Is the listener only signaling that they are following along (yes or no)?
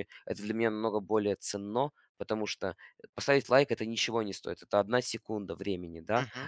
yes